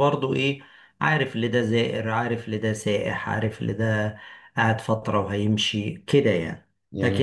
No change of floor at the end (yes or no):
yes